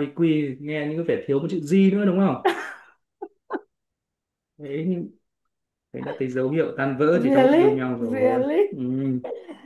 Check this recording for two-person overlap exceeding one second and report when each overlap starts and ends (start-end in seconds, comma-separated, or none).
7.1-8.7